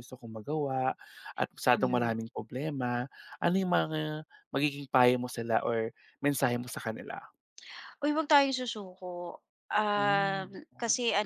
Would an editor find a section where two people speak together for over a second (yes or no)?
no